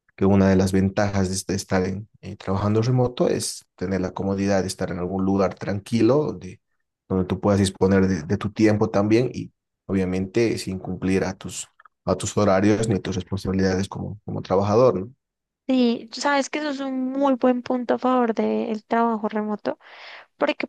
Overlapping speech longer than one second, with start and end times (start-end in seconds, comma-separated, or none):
none